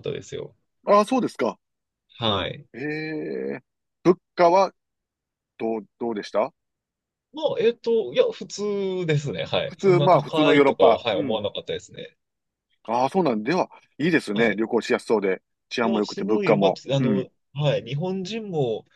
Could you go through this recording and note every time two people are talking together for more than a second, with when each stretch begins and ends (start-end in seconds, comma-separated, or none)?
9.7-11.4, 15.8-17.2